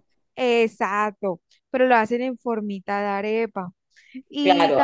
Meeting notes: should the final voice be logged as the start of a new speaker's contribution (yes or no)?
yes